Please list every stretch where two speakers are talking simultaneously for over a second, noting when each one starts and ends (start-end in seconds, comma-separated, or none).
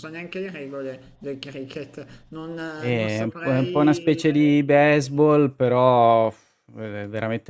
2.8-4.4